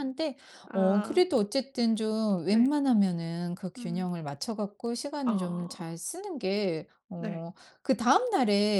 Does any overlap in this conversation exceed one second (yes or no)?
no